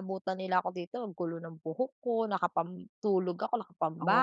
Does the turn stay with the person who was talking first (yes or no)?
no